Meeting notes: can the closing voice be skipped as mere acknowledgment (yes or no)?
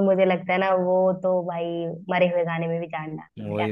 no